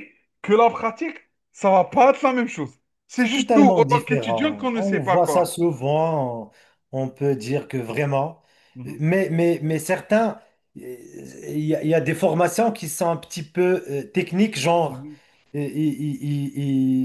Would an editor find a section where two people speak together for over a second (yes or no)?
yes